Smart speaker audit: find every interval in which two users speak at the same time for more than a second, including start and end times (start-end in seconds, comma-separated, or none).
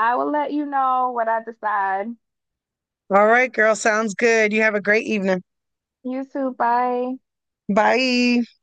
none